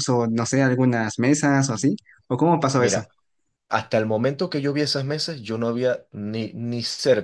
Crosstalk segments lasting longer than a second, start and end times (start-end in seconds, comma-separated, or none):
none